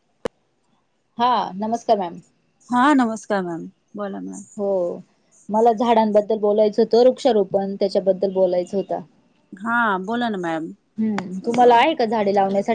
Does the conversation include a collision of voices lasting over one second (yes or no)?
no